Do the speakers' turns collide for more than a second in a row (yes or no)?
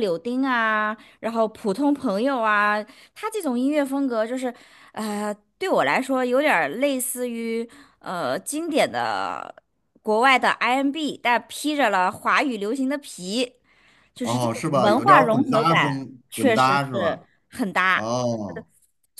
yes